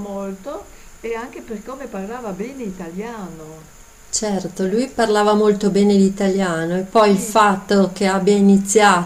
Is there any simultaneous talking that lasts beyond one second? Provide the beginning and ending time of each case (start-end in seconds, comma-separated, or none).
none